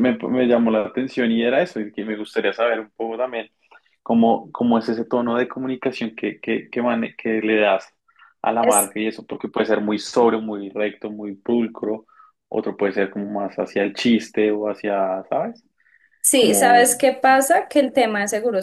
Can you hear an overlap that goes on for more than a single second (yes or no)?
no